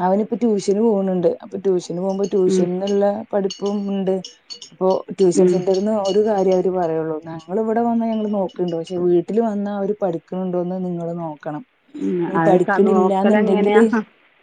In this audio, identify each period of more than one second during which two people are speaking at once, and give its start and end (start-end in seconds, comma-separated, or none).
12.4-13.8